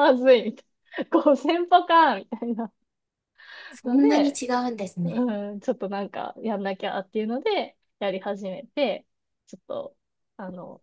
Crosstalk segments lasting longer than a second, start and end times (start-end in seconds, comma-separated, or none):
none